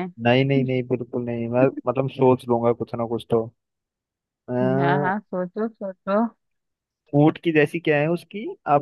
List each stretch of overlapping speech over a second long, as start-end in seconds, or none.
none